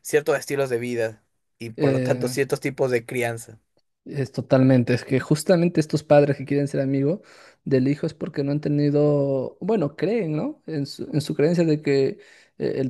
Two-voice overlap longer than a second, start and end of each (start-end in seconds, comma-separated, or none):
none